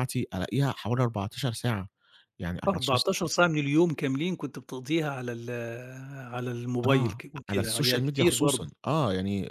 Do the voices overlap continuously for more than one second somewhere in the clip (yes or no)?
yes